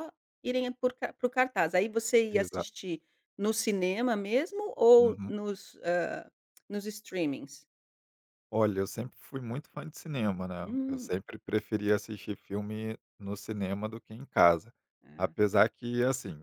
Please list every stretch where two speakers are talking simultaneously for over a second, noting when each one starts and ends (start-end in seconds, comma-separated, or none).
none